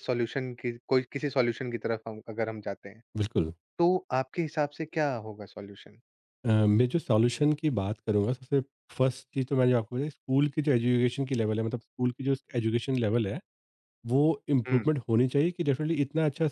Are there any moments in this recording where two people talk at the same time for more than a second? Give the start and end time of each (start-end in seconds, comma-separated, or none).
none